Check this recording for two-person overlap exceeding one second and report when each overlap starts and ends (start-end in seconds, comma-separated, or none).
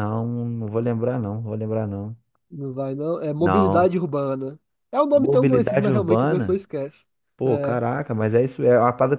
5.1-6.7